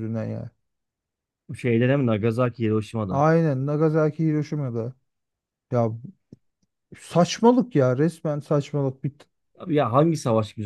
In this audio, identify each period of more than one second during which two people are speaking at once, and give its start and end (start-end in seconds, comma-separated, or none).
none